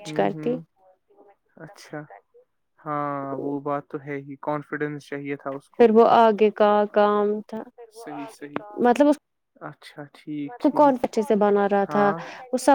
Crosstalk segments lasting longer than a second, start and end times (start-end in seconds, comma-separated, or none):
none